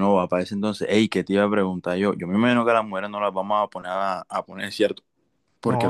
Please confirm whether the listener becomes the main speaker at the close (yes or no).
no